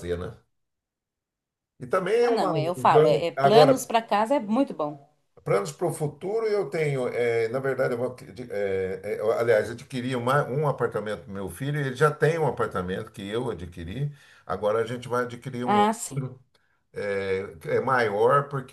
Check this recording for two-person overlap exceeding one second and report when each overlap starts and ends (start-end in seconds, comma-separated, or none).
2.2-3.9